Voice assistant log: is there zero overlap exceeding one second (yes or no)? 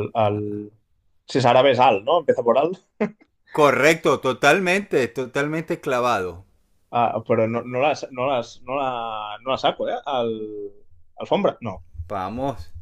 yes